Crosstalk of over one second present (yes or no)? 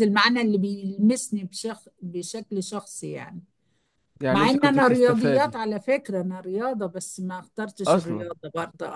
yes